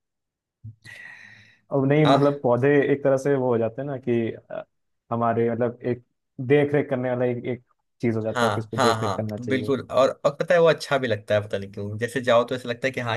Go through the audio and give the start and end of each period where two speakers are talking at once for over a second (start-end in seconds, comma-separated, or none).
8.3-9.7